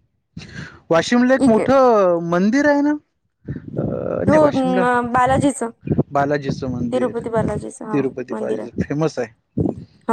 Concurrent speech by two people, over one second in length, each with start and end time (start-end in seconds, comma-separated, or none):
6.9-8.7